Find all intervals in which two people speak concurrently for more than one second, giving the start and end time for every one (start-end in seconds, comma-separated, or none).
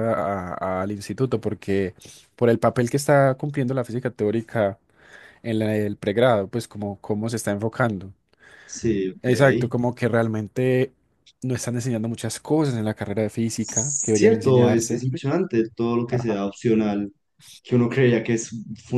13.6-15.1